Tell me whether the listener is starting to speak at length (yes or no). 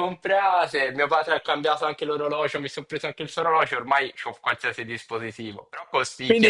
yes